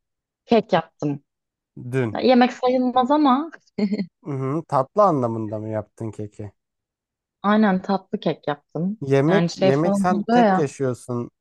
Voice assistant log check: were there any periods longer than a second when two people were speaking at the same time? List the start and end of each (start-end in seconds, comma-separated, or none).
9.0-10.7